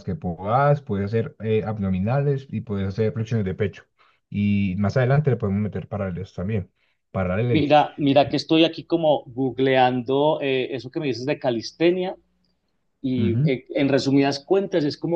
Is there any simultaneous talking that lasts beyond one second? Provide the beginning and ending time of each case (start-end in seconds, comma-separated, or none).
none